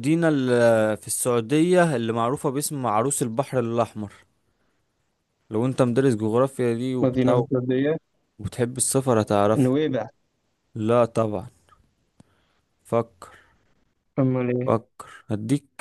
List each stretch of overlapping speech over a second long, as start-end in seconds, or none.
none